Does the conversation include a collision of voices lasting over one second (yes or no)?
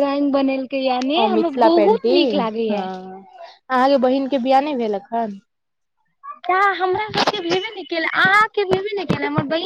yes